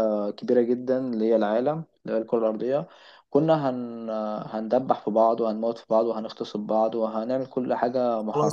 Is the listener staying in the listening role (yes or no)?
no